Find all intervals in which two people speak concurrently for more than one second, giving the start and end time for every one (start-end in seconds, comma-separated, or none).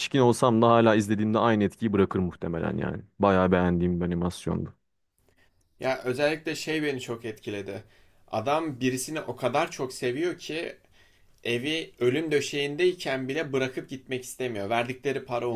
none